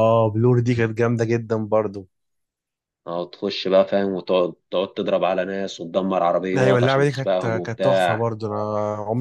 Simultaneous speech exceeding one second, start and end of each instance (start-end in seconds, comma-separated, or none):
6.6-8.2